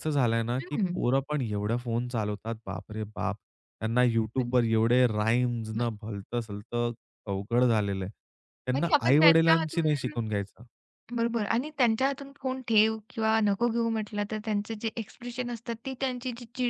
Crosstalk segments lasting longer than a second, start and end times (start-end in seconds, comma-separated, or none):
8.8-10.1